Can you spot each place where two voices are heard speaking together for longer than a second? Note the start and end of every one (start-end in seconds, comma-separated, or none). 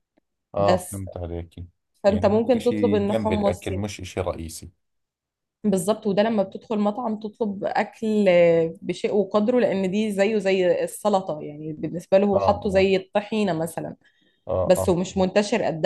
2.1-3.7